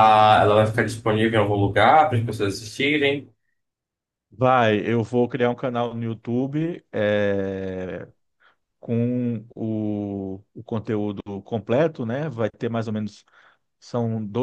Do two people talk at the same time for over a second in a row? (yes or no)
no